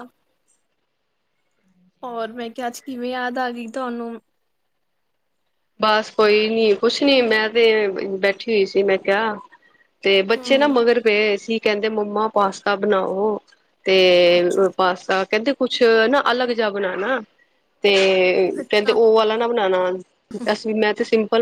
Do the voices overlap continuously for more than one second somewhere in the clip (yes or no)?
no